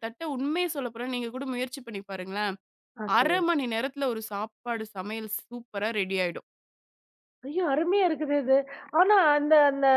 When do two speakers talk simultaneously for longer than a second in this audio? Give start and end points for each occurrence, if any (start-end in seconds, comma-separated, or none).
none